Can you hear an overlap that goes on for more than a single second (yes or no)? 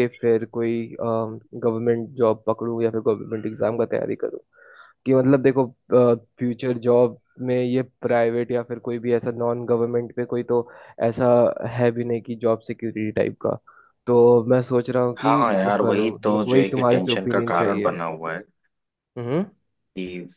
yes